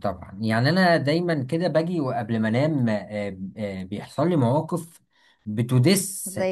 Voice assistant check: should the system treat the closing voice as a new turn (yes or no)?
no